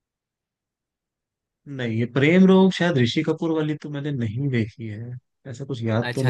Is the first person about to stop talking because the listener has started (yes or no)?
yes